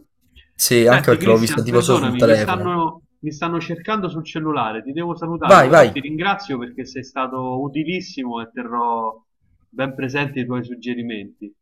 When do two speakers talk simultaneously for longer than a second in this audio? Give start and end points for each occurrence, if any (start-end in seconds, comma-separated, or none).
0.8-2.8